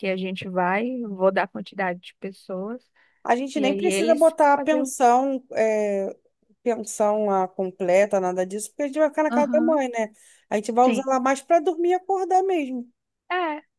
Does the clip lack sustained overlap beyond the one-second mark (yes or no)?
no